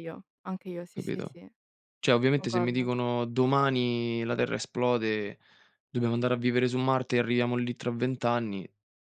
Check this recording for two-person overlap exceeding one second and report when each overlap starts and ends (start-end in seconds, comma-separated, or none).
none